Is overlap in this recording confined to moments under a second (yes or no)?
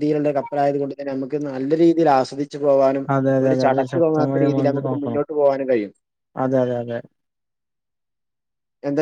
no